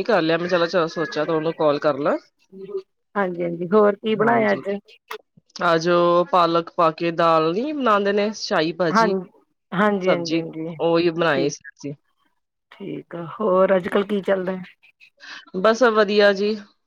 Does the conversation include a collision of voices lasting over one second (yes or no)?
no